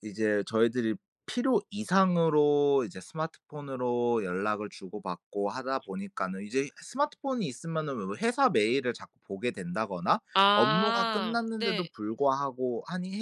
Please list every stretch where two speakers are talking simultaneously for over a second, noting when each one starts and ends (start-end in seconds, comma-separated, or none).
10.3-11.9